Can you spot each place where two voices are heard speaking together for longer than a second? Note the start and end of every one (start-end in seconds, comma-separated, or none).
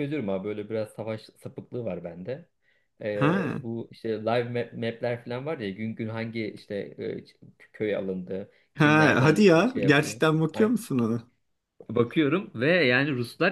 8.7-10.2